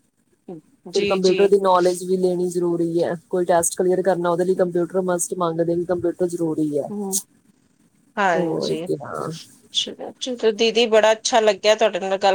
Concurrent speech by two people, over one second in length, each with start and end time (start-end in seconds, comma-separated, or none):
none